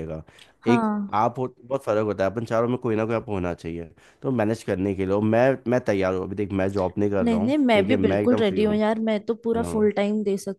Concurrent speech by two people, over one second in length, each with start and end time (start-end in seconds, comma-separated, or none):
7.2-8.8